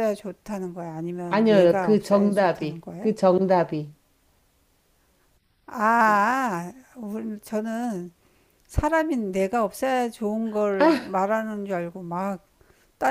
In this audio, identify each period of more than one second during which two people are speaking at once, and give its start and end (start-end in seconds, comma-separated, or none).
1.3-3.1